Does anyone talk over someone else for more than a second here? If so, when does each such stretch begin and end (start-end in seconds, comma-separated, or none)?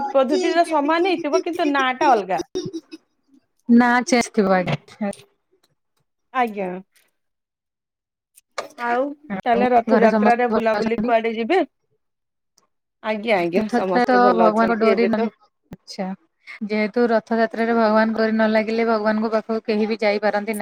9.3-11.1